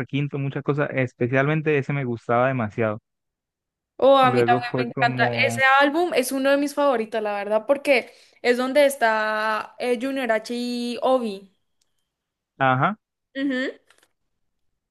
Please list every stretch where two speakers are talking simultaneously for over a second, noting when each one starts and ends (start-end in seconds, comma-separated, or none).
4.2-5.6